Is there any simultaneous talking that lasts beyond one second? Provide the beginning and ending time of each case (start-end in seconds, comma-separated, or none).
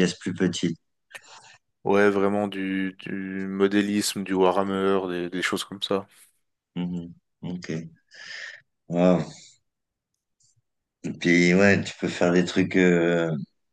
none